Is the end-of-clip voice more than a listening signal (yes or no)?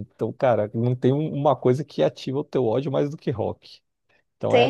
no